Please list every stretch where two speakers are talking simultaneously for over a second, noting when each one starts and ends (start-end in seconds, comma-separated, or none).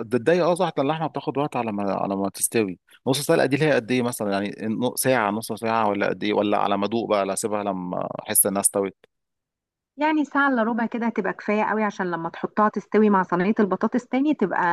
none